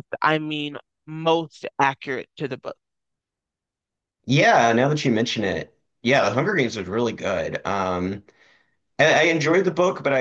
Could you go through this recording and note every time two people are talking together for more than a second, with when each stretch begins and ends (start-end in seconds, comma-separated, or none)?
none